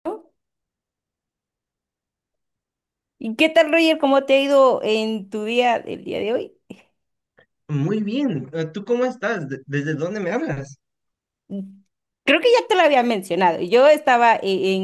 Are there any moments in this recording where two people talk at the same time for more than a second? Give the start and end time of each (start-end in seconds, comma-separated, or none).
none